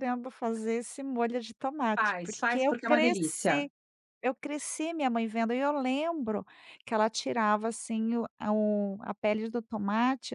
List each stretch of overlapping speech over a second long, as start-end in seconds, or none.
1.9-3.7